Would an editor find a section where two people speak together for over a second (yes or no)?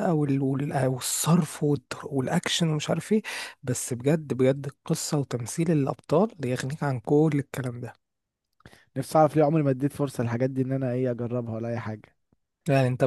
no